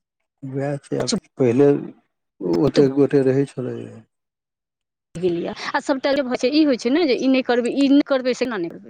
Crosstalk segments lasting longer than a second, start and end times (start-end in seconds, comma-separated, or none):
none